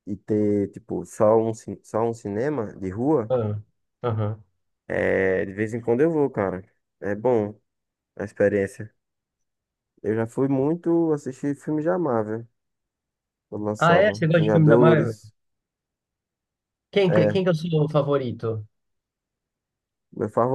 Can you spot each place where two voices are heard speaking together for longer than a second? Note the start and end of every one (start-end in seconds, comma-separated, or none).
13.8-15.2